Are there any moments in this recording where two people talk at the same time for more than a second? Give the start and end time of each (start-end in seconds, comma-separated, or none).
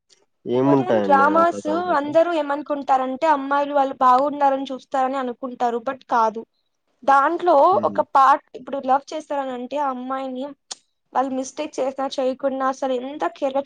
0.6-2.1